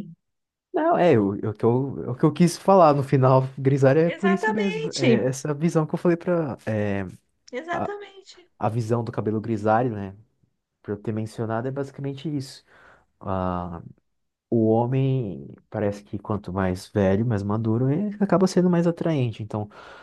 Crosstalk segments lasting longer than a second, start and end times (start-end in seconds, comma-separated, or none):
4.0-5.3